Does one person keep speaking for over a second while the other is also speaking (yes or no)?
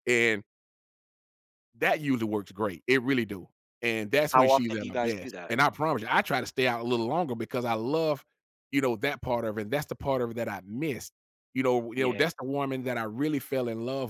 yes